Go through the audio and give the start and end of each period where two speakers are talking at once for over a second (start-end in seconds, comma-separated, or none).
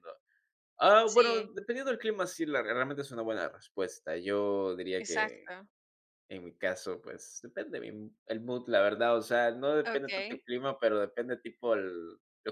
none